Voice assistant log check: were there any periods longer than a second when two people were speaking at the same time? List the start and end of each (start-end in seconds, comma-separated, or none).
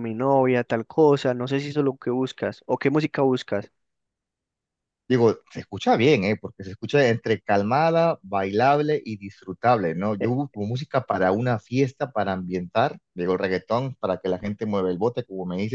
none